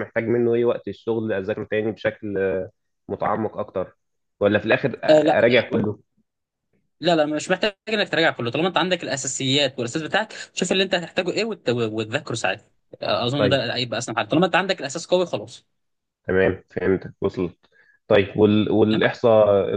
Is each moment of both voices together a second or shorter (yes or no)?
yes